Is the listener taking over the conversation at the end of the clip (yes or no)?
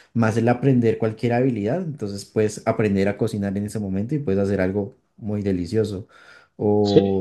yes